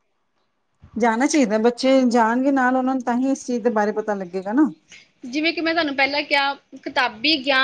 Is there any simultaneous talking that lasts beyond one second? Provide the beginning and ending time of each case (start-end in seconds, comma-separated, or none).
none